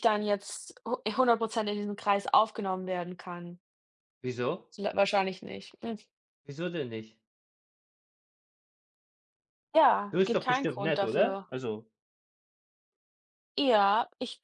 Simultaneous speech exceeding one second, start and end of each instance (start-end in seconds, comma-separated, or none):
10.1-11.5